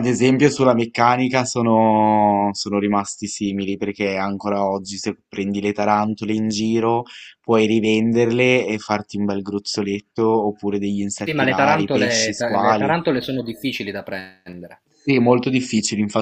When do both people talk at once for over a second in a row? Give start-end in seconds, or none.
11.2-13.0